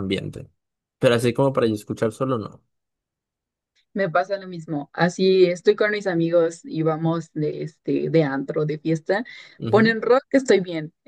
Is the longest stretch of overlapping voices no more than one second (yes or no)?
yes